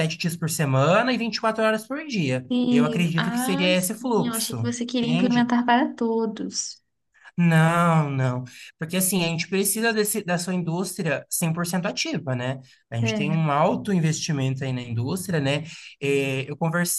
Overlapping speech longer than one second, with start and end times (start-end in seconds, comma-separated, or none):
2.5-5.5